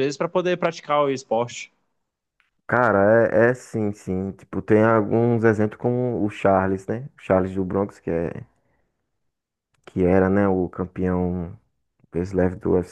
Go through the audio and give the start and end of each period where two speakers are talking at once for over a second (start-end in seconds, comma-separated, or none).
none